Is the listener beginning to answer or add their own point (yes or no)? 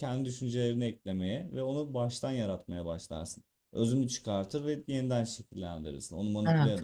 no